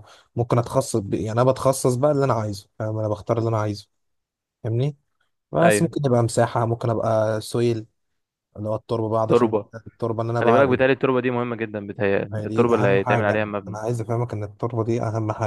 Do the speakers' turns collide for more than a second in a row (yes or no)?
yes